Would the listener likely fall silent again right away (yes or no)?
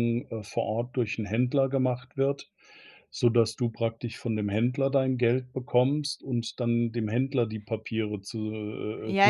no